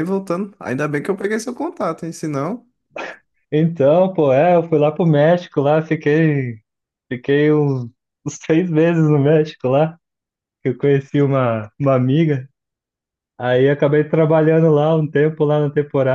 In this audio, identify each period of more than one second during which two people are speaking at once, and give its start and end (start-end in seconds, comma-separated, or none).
none